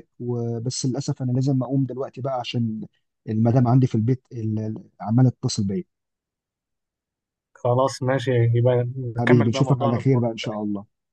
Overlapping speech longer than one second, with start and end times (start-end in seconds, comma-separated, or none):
9.2-10.6